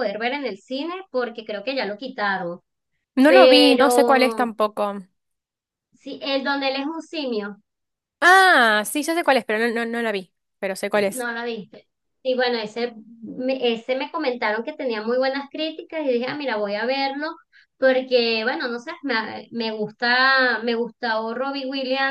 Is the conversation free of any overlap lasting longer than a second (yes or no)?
no